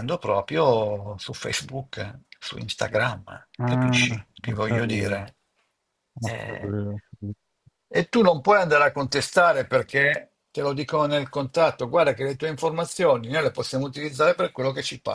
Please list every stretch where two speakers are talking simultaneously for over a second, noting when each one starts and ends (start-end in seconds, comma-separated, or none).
3.6-5.2